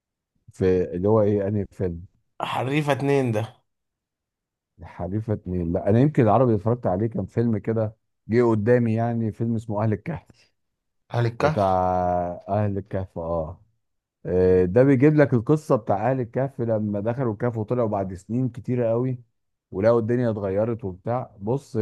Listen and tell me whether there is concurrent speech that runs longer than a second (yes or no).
no